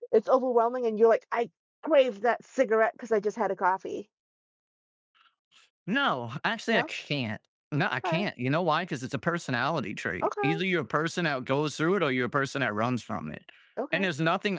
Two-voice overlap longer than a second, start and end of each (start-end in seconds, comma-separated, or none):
none